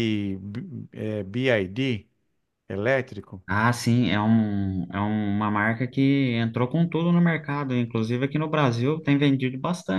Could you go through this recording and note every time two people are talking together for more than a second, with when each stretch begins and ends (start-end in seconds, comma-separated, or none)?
none